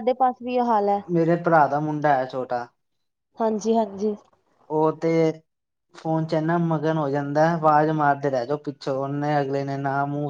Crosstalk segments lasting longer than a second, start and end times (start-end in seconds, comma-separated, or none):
none